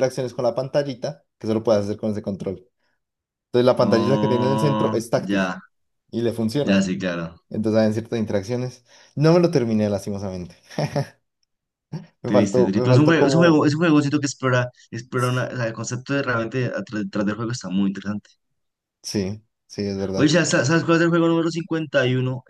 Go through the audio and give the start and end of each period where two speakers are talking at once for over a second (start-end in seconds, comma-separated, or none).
3.8-5.6, 12.2-13.7